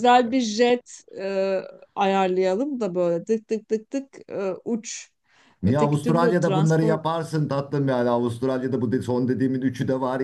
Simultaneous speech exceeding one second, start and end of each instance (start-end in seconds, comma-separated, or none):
5.6-7.0